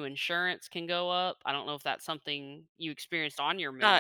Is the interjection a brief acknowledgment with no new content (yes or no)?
no